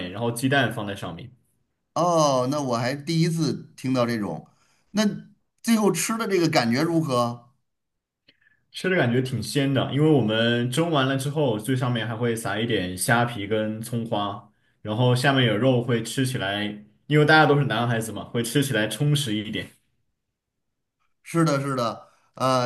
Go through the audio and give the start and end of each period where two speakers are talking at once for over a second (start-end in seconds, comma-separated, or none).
none